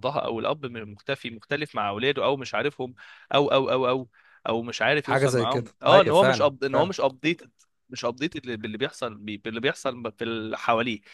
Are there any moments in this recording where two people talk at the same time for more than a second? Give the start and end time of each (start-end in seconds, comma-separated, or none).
5.0-6.9